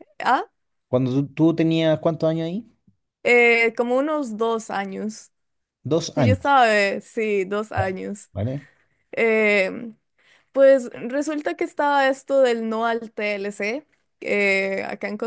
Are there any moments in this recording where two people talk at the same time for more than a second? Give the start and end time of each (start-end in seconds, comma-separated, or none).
none